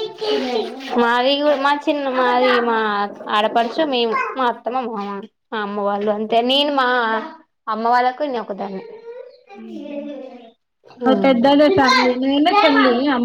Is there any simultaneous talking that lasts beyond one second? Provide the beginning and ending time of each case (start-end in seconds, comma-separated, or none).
none